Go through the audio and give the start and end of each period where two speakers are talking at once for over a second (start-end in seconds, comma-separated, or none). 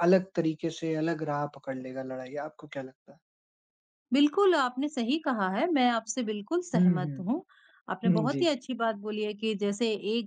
none